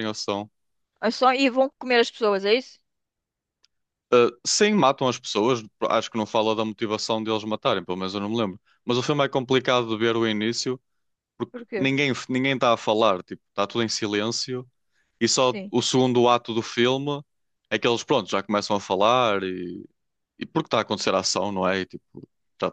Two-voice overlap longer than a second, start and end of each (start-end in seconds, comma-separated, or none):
none